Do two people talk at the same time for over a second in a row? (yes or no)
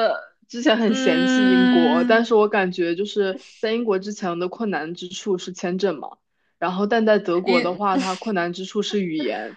yes